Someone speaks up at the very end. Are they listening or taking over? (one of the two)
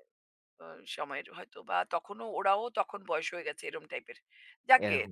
listening